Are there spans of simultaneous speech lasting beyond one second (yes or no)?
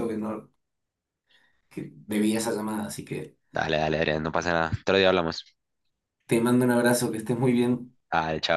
no